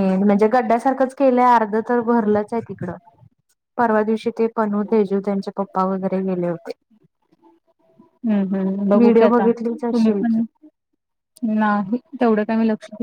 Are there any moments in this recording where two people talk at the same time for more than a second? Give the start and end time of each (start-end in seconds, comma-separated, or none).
9.0-10.4